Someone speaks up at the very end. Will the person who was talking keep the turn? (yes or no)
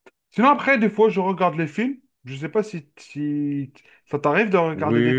no